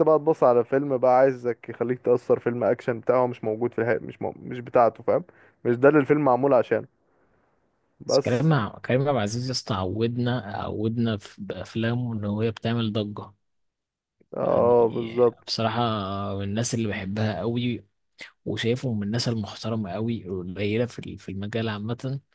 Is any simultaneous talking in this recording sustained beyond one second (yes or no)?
no